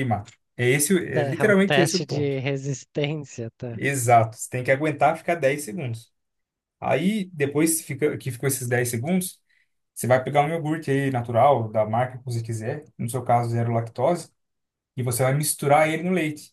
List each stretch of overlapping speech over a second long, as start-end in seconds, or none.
1.1-2.4